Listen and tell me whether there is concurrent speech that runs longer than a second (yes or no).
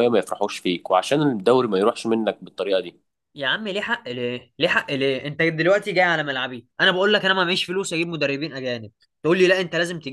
no